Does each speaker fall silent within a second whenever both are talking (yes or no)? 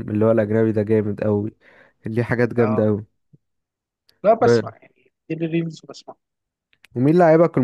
yes